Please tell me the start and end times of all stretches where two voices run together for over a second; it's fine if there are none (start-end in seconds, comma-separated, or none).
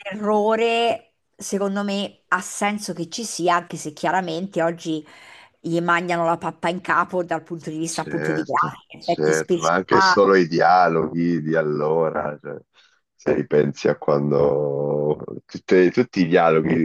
7.9-9.7